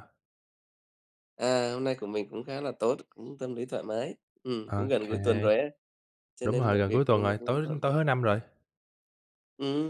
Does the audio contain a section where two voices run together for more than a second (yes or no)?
yes